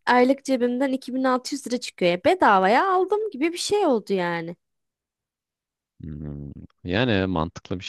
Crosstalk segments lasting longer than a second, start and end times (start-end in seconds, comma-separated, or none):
none